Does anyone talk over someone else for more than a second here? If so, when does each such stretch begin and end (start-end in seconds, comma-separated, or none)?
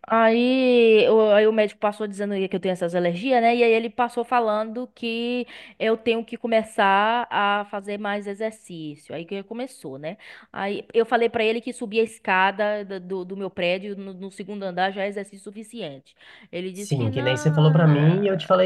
none